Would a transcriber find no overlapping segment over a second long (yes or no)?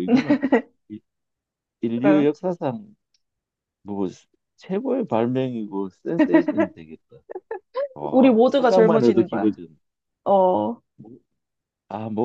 no